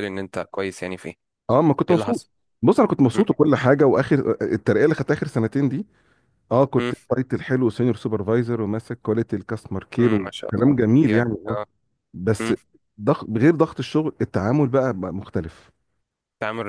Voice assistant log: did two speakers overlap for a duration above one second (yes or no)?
yes